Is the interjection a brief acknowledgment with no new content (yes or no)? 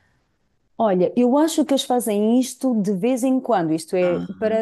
yes